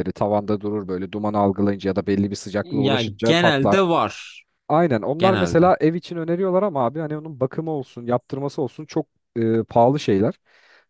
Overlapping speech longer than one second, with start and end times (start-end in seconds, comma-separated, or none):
2.6-3.8